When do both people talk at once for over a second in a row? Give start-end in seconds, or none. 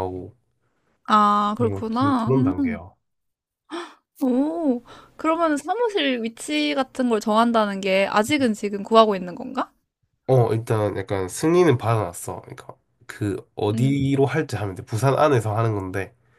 1.6-2.8